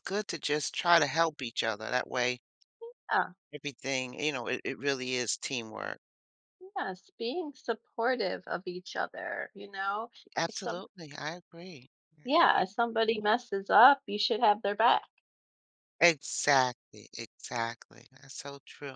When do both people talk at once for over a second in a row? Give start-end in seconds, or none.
none